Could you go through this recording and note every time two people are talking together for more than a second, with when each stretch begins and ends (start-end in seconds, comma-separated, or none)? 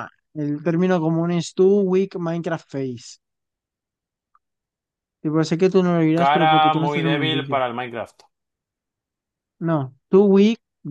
6.1-7.6